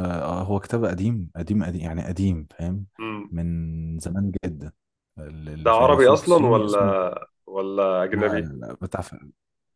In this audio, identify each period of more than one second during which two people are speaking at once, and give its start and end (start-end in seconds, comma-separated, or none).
5.6-6.8